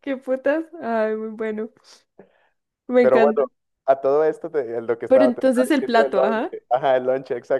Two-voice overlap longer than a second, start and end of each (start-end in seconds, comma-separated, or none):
5.1-6.5